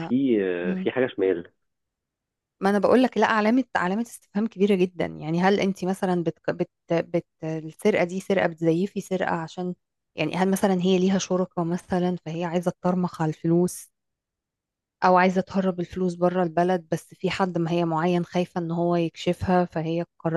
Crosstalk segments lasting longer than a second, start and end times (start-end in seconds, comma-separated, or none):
none